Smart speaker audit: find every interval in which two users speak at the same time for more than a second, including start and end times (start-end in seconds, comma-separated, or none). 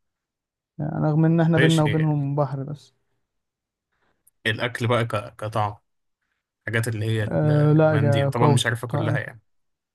7.3-9.2